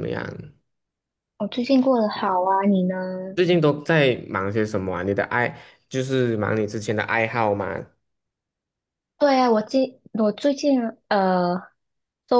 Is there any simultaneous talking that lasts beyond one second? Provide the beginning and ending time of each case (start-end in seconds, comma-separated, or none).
none